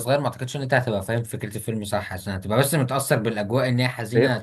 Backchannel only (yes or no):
no